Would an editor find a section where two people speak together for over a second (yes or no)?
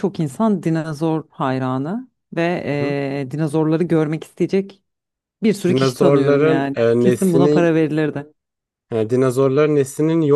yes